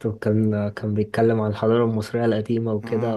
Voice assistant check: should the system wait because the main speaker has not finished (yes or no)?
yes